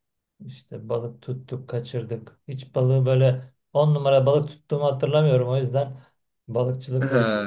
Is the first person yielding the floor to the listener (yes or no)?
no